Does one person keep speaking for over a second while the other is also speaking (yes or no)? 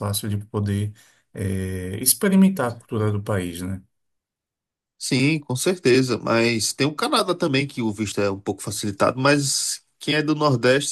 no